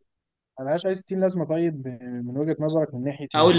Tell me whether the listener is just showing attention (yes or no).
no